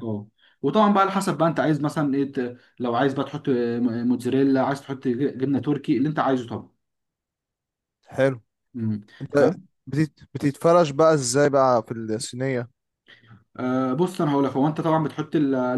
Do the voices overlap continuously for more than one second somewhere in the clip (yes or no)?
no